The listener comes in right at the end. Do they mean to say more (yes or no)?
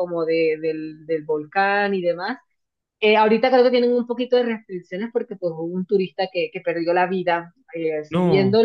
no